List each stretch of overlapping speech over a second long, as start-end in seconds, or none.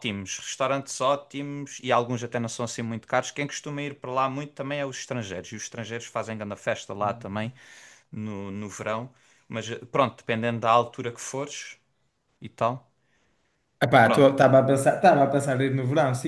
none